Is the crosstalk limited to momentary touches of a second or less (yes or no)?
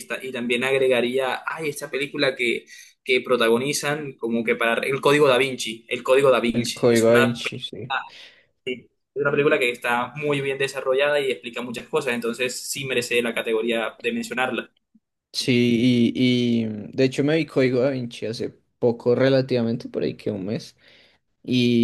no